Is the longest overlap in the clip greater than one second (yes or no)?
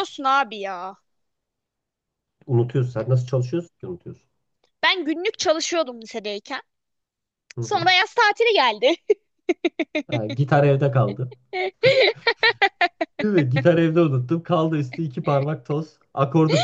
no